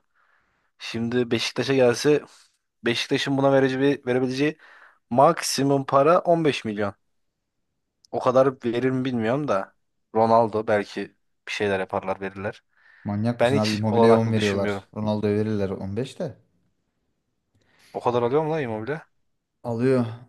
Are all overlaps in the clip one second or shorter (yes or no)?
no